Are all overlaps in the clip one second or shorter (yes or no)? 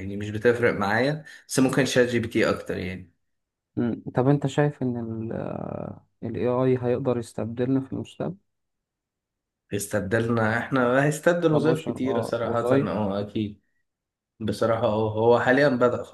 no